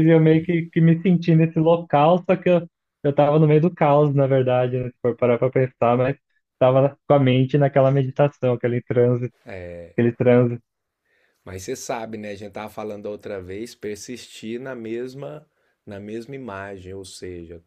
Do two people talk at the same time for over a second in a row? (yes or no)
no